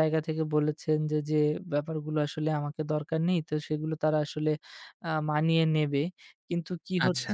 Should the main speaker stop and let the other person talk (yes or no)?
no